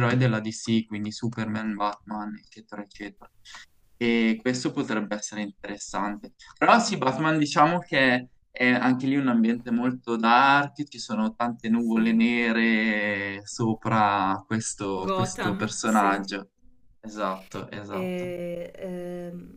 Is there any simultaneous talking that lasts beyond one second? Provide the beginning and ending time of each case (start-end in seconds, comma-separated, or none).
15.0-16.3